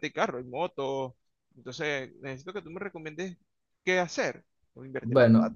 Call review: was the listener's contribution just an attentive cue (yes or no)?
no